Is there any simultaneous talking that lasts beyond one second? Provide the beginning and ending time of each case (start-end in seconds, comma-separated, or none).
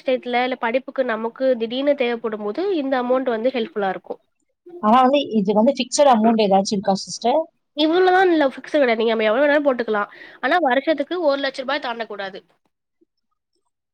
none